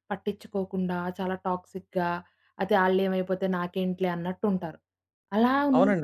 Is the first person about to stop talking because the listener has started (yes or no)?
yes